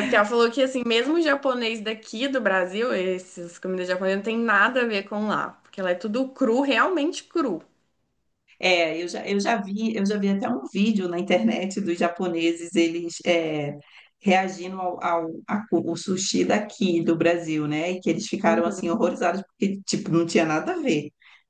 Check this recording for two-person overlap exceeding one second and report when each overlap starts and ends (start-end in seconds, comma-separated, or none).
none